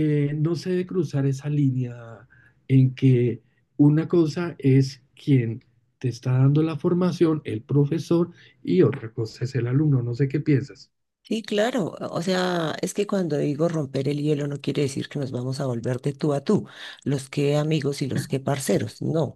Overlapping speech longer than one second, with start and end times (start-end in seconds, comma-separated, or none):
none